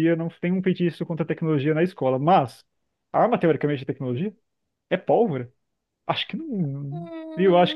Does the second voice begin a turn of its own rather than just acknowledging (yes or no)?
yes